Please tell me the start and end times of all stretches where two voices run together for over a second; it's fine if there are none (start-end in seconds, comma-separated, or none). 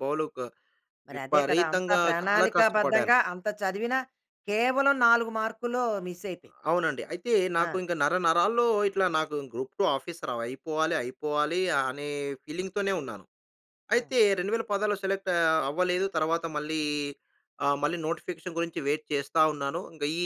1.1-3.1